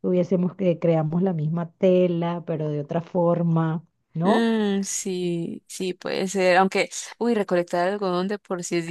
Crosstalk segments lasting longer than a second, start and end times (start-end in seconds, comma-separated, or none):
none